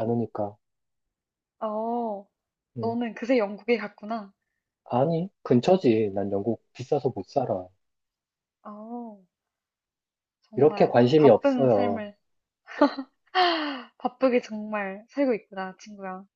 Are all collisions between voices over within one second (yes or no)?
no